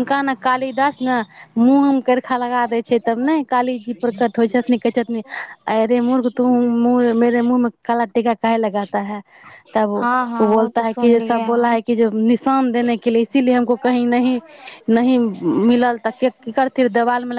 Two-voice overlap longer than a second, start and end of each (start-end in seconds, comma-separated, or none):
10.0-11.7